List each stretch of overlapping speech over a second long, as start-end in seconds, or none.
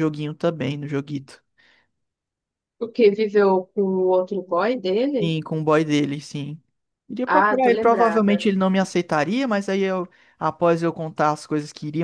7.3-8.5